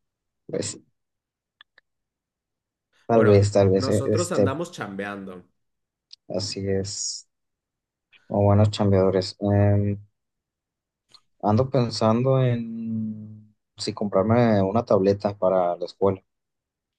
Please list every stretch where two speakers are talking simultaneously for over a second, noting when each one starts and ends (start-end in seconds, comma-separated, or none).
3.1-4.5